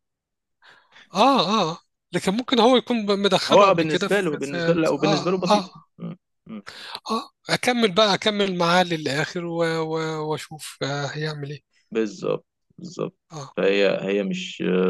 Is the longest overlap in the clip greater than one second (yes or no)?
yes